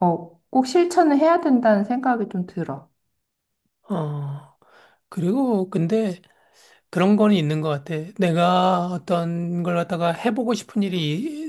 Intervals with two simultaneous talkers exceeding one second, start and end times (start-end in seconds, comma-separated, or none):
none